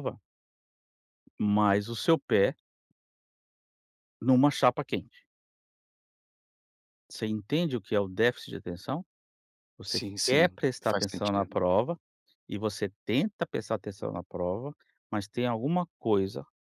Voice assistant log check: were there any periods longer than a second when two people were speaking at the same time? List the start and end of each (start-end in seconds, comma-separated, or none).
9.9-11.6